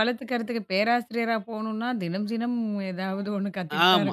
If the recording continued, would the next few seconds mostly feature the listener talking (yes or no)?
yes